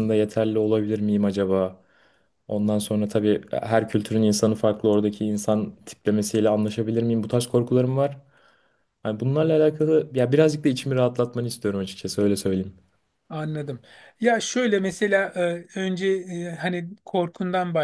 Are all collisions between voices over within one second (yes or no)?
yes